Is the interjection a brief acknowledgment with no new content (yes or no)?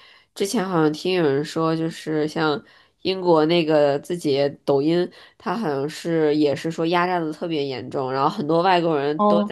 yes